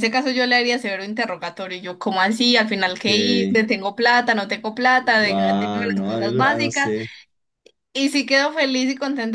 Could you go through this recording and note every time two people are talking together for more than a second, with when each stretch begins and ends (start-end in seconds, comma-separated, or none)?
5.2-6.9